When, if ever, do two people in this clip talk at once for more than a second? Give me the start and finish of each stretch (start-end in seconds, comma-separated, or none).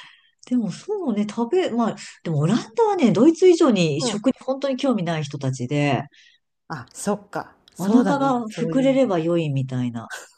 7.8-9.0